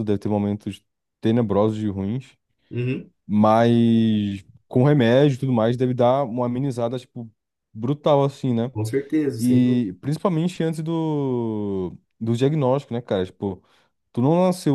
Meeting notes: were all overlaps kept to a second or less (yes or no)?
yes